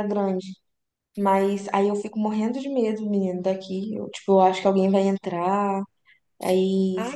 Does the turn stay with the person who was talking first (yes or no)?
no